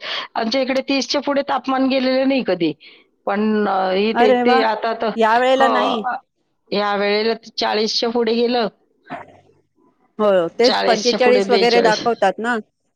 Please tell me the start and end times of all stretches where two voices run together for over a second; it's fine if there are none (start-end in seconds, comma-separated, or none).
10.7-12.0